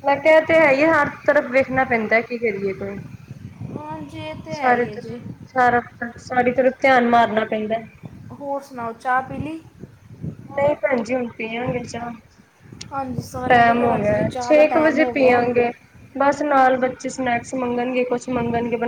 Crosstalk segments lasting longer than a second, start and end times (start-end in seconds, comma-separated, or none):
13.5-15.4